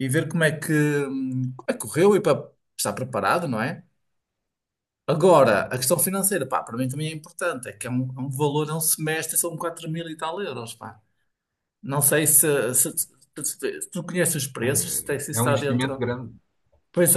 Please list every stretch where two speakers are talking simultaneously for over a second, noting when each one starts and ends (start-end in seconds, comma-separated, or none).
14.6-16.0